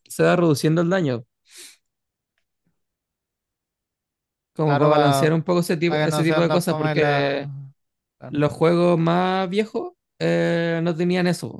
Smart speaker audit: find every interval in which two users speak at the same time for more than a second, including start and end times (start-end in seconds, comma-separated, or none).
5.9-7.5